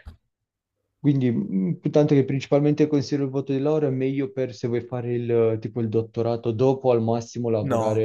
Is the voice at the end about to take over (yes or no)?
no